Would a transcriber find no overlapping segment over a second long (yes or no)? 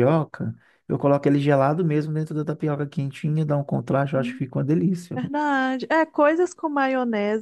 yes